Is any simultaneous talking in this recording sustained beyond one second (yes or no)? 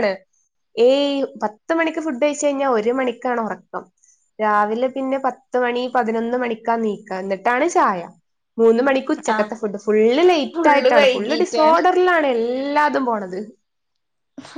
yes